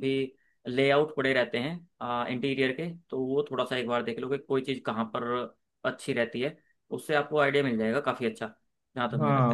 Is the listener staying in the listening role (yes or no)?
no